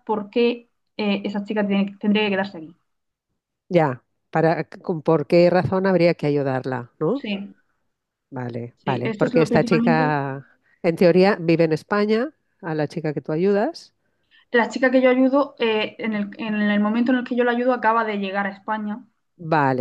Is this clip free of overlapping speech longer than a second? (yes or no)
no